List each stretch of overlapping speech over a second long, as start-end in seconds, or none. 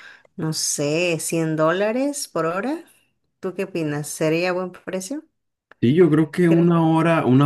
none